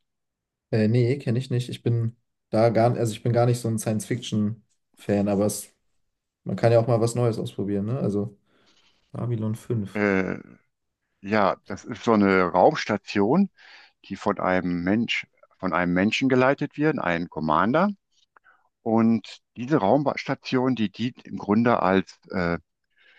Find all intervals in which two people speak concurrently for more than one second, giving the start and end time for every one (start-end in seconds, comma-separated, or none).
none